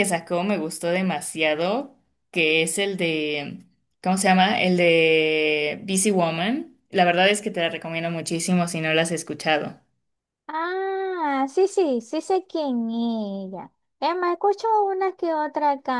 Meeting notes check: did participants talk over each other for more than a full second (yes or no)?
no